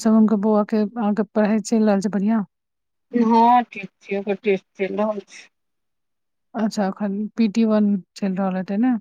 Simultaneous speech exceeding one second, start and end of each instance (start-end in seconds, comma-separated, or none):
none